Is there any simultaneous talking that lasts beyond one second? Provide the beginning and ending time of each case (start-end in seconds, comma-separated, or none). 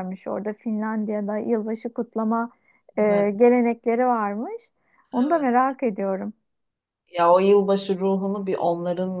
none